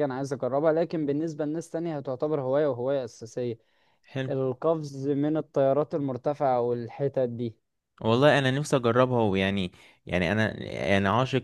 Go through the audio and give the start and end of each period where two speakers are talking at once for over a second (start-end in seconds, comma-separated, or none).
none